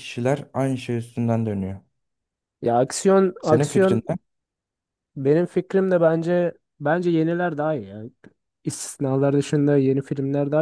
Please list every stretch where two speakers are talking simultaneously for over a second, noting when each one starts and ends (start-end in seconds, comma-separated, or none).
none